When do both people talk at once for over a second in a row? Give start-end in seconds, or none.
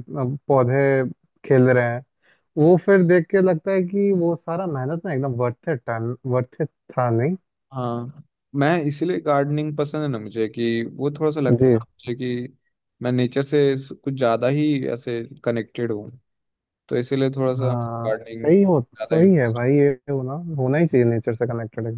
17.6-19.6